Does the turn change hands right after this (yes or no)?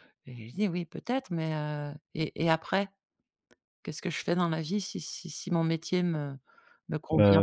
yes